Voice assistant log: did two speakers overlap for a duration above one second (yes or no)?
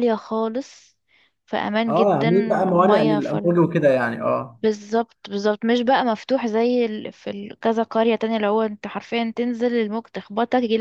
yes